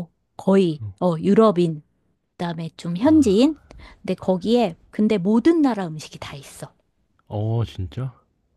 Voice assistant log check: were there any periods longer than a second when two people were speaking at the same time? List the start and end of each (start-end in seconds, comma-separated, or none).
none